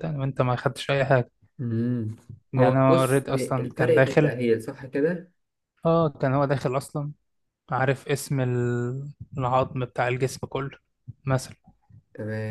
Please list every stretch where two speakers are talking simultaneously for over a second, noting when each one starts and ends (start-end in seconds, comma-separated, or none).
2.6-4.3